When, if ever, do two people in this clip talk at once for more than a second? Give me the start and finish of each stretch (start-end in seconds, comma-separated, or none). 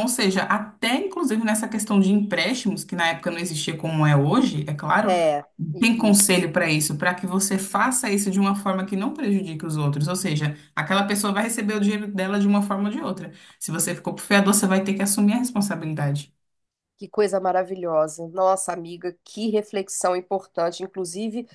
none